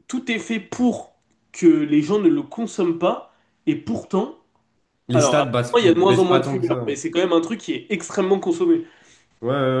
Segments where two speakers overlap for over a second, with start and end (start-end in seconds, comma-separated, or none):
5.1-7.0